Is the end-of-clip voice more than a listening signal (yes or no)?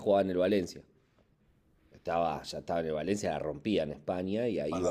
yes